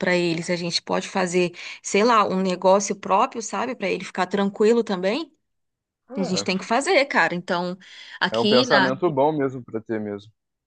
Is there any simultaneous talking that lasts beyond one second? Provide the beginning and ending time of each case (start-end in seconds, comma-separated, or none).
none